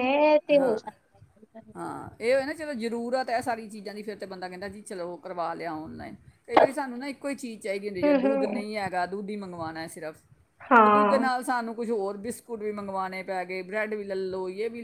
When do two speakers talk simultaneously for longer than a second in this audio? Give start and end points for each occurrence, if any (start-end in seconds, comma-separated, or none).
none